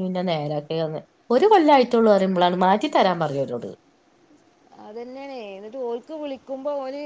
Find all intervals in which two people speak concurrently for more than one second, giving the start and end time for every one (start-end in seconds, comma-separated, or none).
none